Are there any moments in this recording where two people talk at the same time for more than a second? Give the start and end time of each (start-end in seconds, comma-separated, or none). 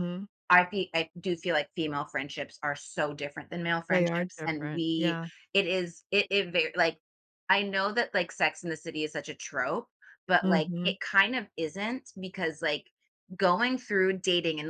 3.9-5.3